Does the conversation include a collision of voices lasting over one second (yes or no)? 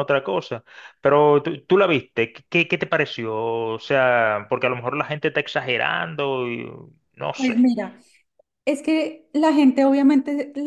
no